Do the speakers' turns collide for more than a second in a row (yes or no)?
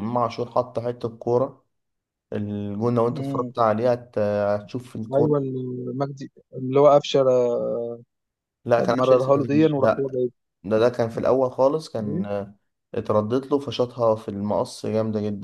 yes